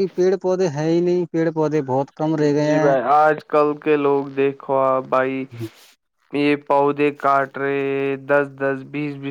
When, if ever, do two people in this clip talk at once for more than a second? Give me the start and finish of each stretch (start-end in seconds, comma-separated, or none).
none